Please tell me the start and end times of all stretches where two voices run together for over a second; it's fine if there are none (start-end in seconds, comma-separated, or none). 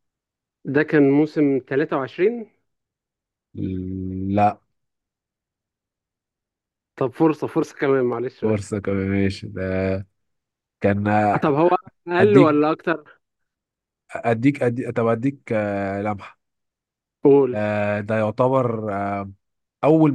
none